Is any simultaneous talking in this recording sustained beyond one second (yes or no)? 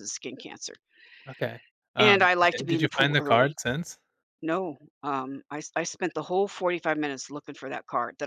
yes